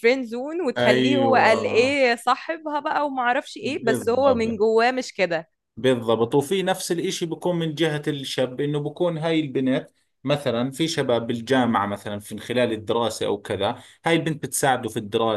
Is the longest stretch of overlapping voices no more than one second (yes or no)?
no